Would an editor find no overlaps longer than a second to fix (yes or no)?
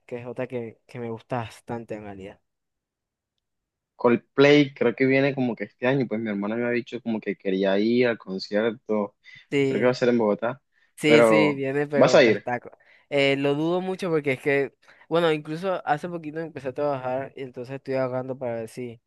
no